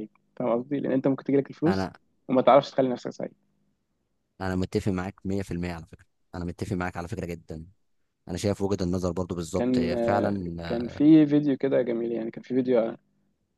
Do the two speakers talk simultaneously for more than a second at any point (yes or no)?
yes